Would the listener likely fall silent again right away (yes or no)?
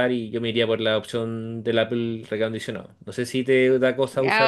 no